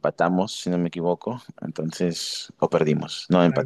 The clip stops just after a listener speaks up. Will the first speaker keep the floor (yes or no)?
no